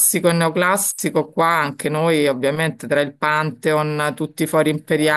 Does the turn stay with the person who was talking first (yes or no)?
yes